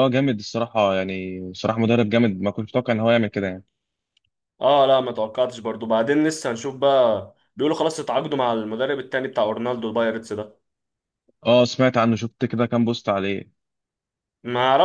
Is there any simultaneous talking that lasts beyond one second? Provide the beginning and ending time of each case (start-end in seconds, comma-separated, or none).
none